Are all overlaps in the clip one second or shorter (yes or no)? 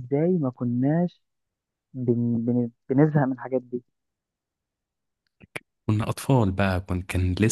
yes